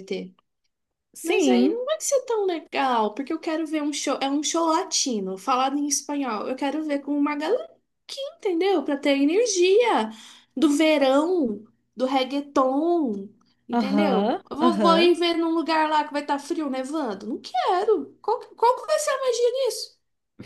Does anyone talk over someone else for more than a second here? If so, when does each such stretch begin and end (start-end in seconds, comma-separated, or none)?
13.7-15.1